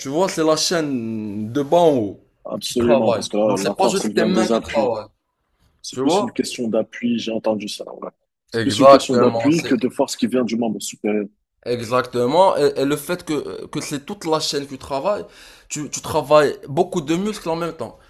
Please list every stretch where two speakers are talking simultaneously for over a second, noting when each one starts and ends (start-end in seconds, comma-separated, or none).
2.6-4.9, 8.5-9.7